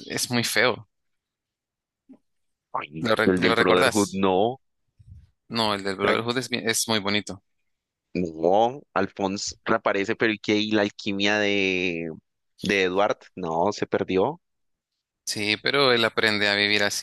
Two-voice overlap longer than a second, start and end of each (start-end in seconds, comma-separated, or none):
3.0-4.3